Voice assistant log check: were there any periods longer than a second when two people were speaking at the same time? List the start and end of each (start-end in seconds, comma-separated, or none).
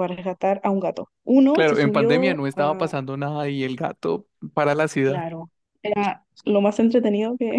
1.5-2.9